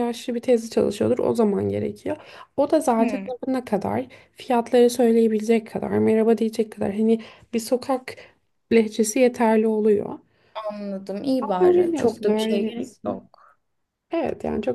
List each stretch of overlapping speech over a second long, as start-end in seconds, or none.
11.4-13.3